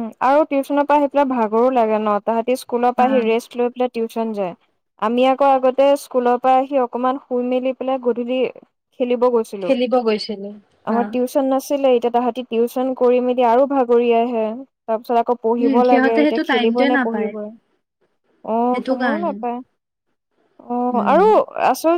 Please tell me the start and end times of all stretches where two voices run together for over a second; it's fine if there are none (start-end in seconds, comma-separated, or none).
15.6-17.3